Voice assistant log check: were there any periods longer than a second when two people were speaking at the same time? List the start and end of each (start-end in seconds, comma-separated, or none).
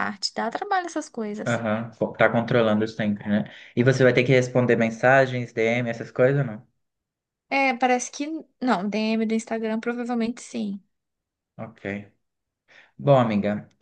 none